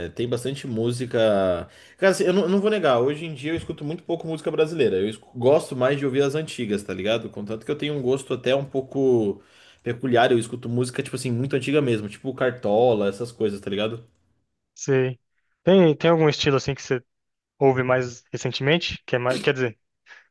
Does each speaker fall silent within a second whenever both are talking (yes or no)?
yes